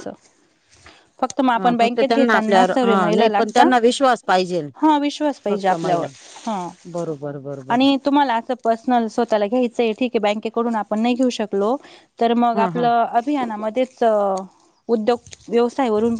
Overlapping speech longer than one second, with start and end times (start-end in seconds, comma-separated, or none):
1.6-3.7